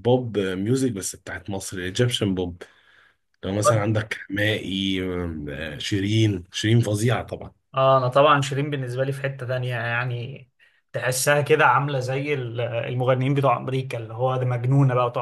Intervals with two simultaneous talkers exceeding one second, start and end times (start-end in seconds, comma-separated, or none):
none